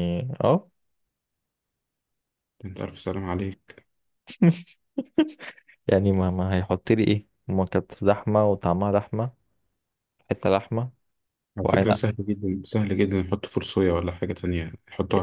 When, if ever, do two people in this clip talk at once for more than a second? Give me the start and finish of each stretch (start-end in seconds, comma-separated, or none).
none